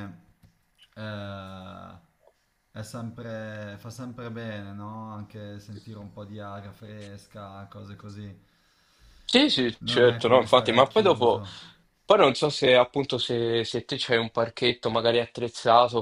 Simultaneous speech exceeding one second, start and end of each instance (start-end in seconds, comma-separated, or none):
9.8-11.4